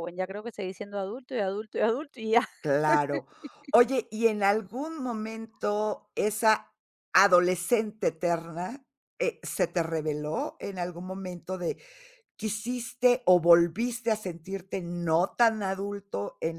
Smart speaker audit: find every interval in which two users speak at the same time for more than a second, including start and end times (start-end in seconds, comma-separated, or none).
none